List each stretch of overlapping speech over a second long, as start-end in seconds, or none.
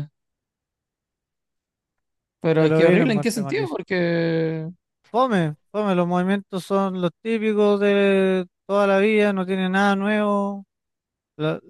2.6-3.8